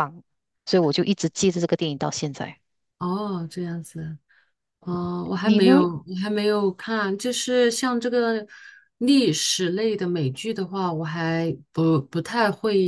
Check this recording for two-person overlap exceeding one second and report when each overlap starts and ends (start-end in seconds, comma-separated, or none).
none